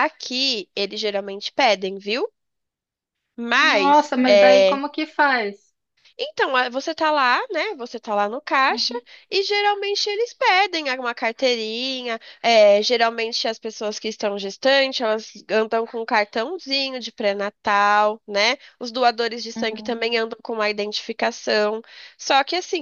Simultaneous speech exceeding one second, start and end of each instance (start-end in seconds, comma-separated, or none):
3.6-4.8